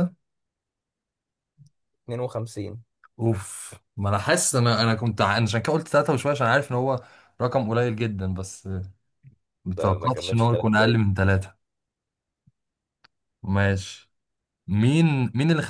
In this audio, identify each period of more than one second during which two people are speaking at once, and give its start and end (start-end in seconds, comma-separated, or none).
9.7-11.0